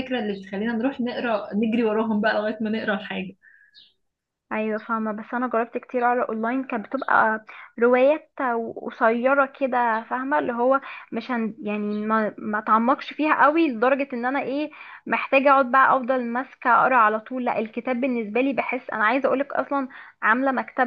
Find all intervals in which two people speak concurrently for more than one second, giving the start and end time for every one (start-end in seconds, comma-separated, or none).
none